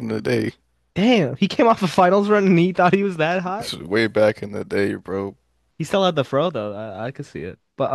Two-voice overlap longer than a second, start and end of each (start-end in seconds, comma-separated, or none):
none